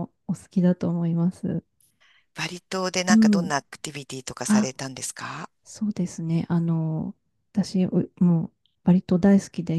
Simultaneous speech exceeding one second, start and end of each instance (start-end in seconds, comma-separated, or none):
none